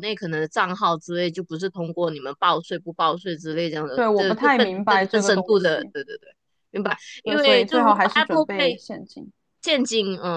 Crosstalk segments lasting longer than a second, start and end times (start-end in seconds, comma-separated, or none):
3.9-5.9, 7.2-8.8